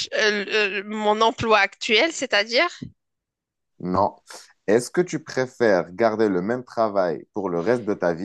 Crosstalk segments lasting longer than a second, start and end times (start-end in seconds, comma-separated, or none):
none